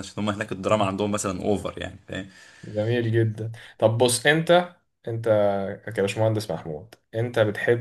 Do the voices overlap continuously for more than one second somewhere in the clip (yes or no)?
no